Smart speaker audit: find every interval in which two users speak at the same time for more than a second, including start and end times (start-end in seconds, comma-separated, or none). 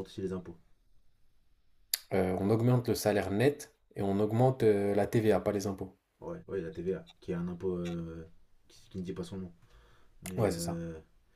none